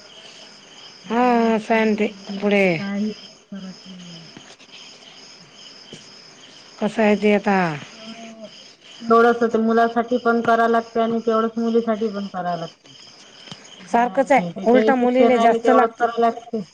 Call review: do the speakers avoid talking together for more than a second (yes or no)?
no